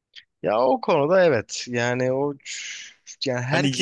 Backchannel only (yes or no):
no